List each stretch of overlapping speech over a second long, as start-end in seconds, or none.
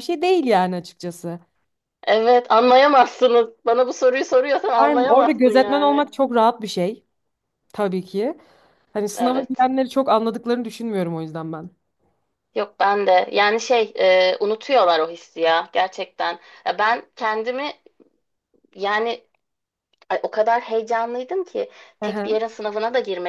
4.8-6.1